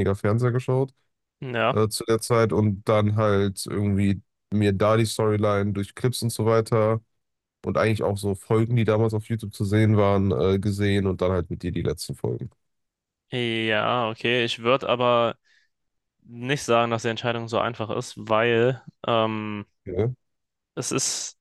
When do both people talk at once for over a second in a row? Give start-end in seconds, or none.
none